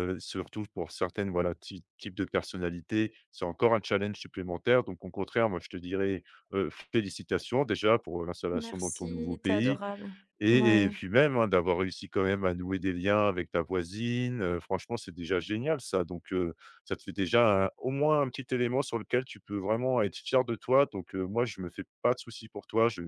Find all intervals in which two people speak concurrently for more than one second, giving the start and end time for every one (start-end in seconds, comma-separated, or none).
8.5-9.8